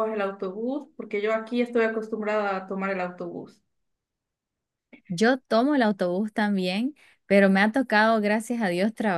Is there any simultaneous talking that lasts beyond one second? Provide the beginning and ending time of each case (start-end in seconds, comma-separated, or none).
none